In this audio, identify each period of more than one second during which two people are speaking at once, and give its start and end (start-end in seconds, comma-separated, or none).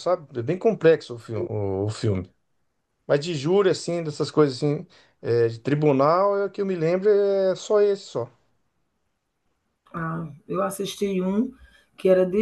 none